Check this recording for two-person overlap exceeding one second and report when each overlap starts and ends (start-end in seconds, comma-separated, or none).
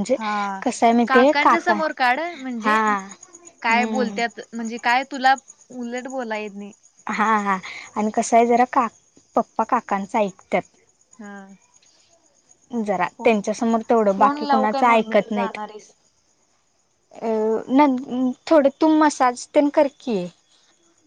14.2-15.6